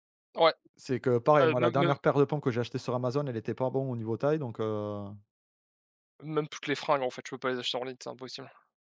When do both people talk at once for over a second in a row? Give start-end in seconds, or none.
none